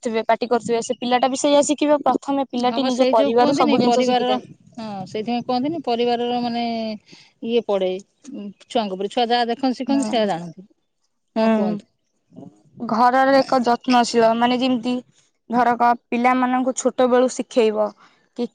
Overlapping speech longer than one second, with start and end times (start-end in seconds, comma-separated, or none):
2.7-4.3